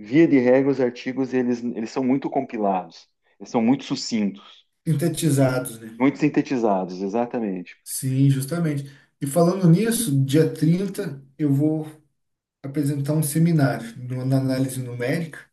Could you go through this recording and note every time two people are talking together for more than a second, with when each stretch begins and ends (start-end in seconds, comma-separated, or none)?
none